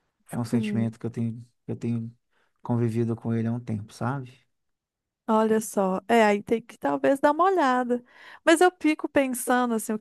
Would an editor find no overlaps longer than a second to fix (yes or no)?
yes